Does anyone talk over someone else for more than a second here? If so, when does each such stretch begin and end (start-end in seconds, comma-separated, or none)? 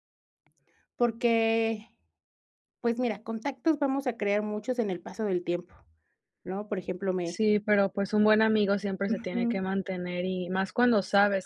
none